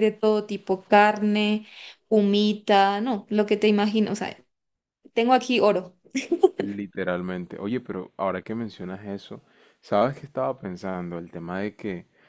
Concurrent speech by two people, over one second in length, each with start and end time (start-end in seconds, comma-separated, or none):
none